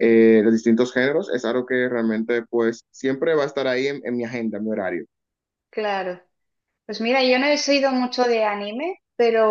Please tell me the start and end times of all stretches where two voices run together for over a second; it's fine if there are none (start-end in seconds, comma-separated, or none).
none